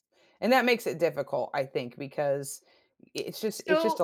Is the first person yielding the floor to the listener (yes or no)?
no